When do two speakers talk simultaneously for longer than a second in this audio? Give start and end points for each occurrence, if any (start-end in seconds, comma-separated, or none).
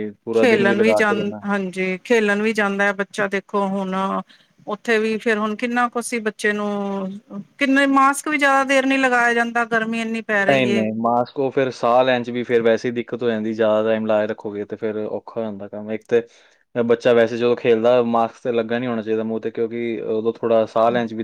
none